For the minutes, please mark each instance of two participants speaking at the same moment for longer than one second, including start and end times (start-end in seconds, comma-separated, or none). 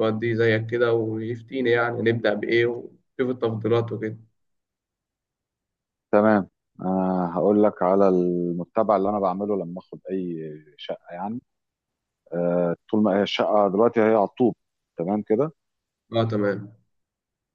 none